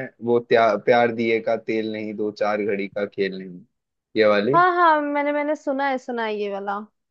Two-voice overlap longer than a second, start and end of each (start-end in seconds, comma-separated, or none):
none